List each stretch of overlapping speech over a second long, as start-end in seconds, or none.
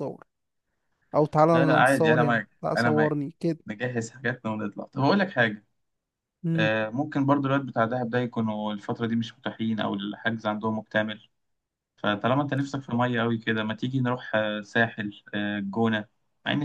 1.5-3.2